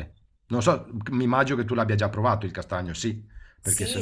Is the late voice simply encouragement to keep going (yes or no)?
no